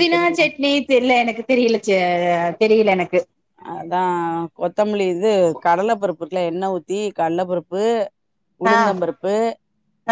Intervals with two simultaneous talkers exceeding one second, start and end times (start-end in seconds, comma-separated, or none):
none